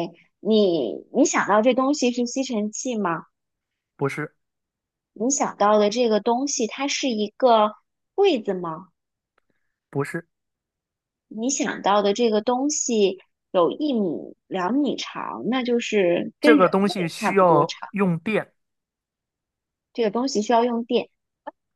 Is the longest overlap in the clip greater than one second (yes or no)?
yes